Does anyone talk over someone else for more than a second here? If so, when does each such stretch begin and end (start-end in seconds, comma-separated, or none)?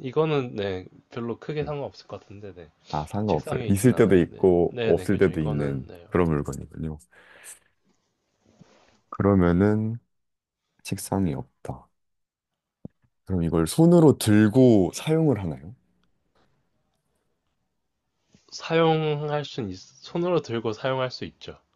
3.3-6.0